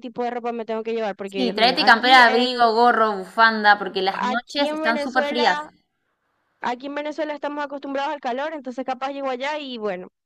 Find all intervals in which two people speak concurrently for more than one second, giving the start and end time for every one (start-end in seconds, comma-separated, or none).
1.2-2.6, 4.1-5.6